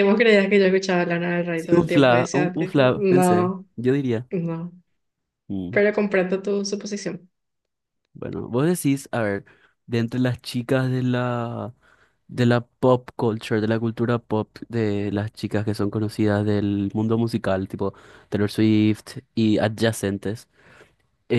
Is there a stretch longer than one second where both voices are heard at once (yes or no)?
yes